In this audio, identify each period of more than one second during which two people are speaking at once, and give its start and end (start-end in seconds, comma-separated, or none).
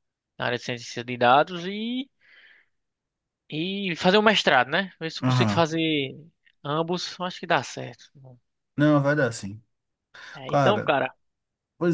none